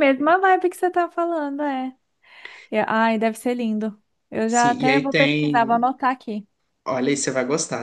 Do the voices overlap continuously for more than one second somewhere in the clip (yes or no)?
yes